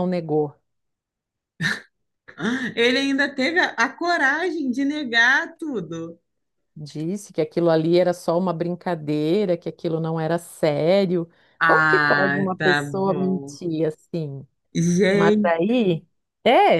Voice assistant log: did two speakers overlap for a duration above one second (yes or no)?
yes